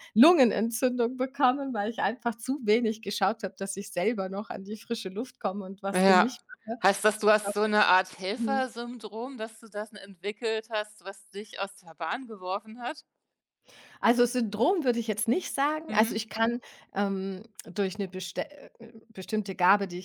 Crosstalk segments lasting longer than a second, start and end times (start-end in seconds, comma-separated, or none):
none